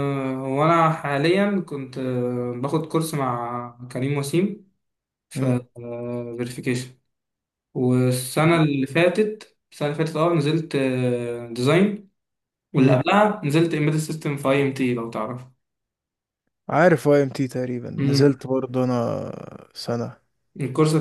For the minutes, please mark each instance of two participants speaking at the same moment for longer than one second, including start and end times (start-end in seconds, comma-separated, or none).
none